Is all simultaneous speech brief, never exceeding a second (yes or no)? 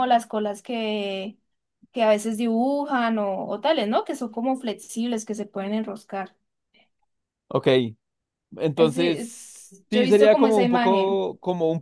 no